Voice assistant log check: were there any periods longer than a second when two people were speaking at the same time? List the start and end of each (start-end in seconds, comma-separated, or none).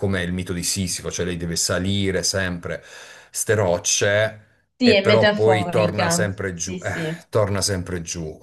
4.8-6.8